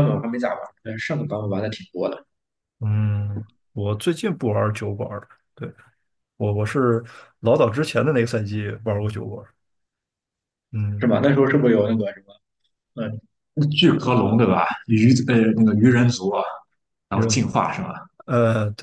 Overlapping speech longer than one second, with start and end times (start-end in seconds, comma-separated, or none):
none